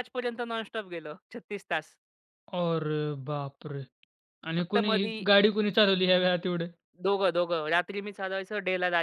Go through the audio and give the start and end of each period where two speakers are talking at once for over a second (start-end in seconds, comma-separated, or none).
none